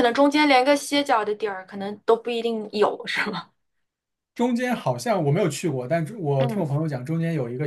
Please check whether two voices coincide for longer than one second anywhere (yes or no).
no